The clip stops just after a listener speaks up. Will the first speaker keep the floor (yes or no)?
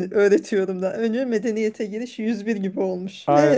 no